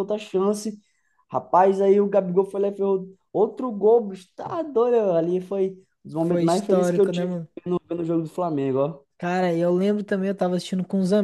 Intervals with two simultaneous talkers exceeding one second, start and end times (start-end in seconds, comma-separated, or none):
6.2-7.5